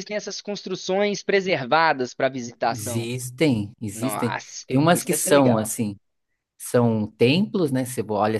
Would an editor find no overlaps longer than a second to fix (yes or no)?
no